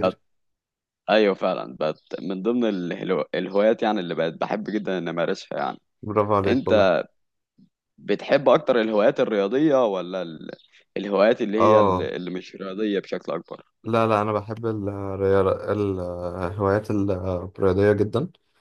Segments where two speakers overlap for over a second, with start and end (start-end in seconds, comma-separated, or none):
none